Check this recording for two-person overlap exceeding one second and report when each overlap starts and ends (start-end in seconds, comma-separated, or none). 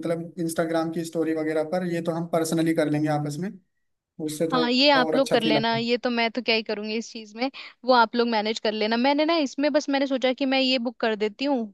4.5-5.8